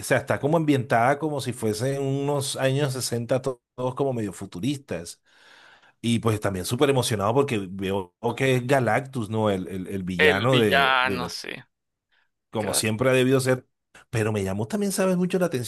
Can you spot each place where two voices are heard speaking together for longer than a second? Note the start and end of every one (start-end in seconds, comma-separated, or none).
10.2-11.4